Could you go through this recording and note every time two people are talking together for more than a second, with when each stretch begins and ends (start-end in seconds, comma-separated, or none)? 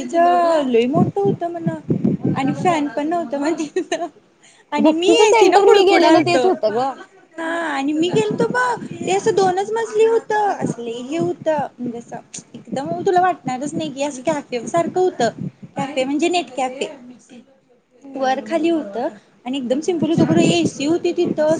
4.8-6.9